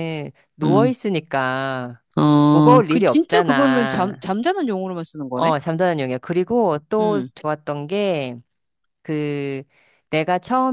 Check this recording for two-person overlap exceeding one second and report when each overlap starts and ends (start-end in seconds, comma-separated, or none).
2.5-4.3